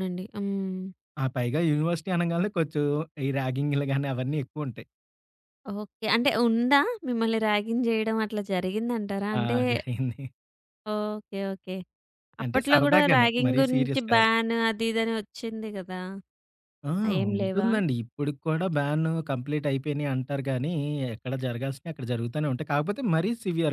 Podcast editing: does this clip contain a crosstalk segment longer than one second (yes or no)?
yes